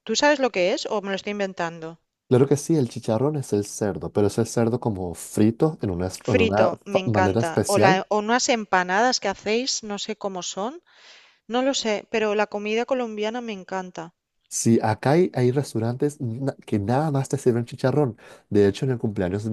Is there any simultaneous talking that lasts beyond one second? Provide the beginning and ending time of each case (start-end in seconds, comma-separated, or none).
6.3-8.0